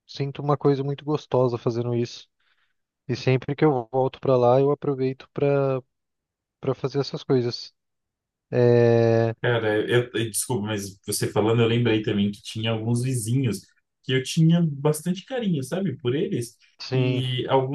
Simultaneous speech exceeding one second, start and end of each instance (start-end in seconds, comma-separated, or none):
none